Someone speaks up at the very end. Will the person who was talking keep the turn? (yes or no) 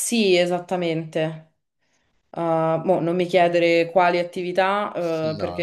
yes